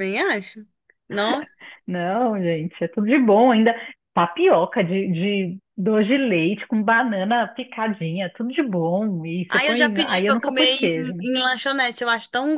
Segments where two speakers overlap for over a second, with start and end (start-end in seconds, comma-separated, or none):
9.5-11.3